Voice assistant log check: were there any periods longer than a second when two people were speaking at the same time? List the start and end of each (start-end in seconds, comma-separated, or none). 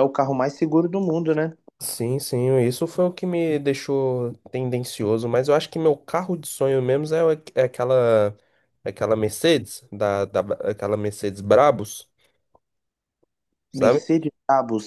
none